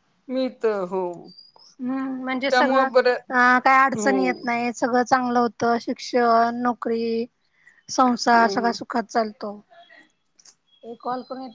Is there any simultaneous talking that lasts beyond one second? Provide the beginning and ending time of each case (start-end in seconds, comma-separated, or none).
none